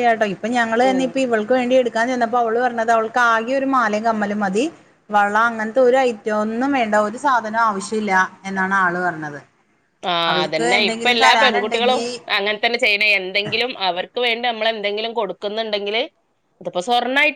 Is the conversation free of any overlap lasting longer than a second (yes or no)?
no